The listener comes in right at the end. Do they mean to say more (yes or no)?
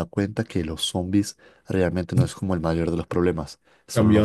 yes